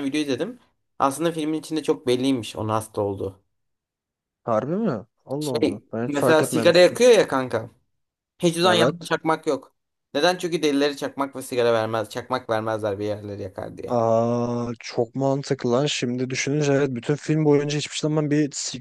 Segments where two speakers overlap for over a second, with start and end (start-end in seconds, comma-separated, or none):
5.4-7.0